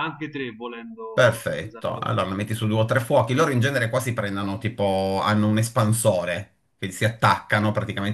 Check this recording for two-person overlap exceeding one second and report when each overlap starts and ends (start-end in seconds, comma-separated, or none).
1.1-2.3